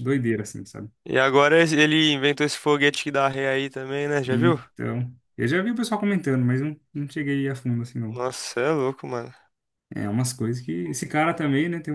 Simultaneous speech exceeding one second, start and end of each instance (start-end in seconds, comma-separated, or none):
none